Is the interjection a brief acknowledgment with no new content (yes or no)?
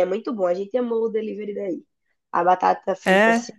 yes